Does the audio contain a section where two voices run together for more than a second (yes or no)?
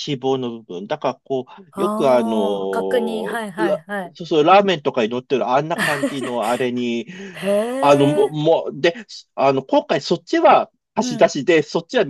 yes